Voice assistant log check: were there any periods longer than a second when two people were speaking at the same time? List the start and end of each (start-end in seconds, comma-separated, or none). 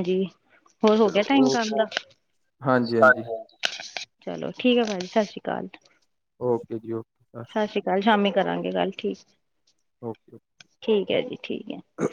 none